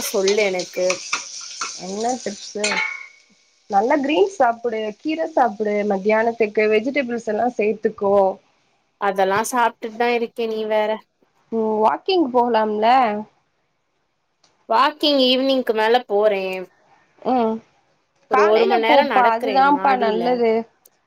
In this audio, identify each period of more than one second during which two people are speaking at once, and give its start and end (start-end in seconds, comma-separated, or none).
18.3-20.2